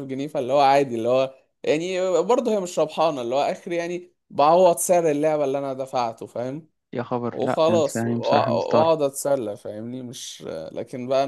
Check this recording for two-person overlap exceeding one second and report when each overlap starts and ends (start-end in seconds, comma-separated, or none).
7.3-8.9